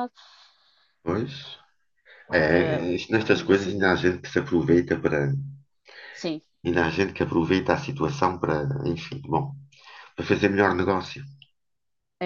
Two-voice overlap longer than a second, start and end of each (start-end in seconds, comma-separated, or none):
2.3-3.9